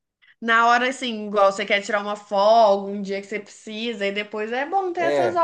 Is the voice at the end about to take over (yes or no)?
yes